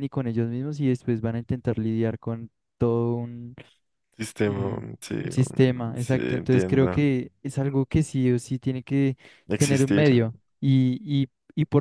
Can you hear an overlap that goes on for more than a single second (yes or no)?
yes